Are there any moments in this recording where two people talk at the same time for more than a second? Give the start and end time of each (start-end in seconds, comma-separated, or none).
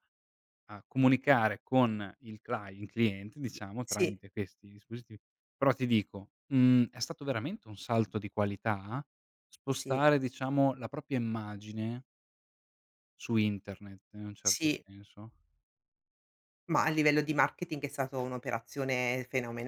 none